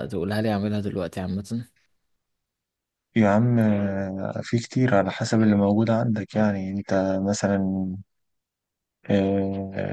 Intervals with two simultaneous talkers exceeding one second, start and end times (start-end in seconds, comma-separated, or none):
none